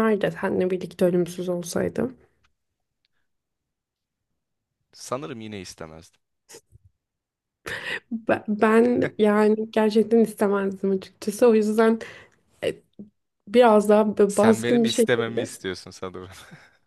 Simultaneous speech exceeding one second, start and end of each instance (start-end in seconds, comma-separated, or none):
14.3-15.5